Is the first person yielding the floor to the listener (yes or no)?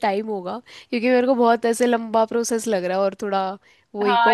yes